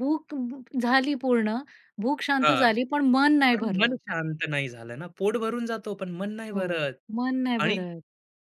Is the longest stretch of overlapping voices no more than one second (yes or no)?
yes